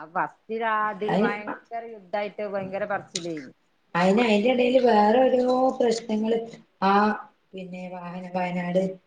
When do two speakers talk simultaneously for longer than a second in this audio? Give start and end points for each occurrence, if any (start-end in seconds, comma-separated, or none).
none